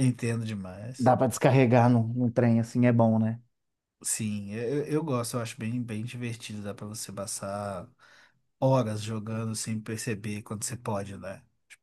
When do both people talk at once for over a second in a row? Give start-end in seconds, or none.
none